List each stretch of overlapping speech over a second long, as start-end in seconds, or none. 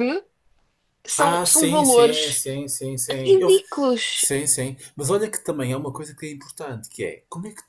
1.2-2.4